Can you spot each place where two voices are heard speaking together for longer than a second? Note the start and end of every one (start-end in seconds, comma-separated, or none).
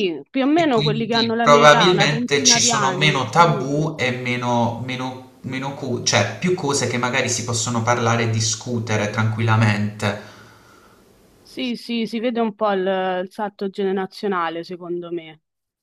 0.5-3.7